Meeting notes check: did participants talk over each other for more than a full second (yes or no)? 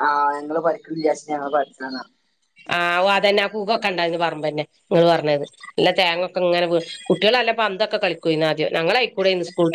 no